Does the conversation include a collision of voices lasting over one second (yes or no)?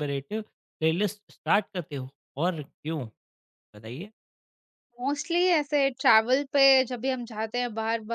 no